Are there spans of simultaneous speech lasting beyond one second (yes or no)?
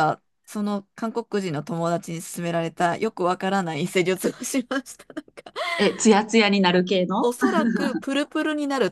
no